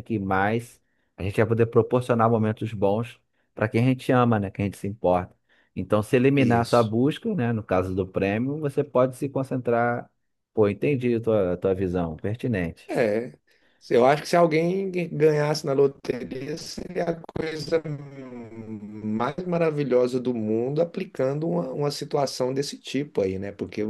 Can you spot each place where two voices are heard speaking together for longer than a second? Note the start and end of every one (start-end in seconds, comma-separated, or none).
none